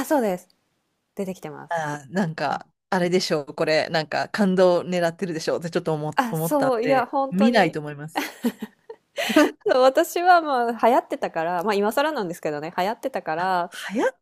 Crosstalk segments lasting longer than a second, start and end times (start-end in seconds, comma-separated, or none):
6.2-7.8